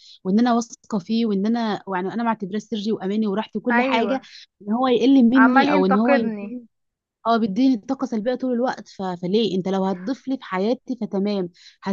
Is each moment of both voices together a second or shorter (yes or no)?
no